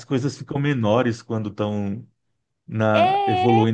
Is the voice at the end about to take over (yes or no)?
no